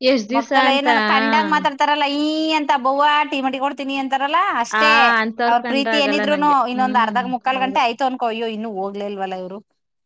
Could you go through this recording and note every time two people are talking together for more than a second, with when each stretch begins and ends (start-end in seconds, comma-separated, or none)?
5.5-7.8